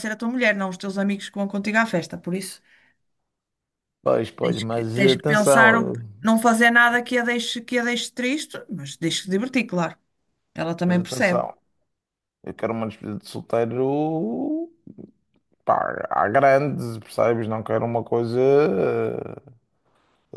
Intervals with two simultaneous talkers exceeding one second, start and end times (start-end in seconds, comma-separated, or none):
4.4-6.3